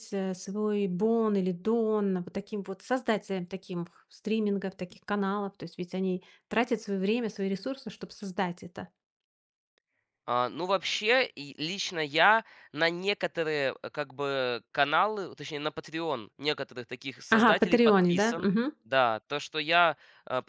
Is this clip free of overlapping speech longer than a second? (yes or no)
no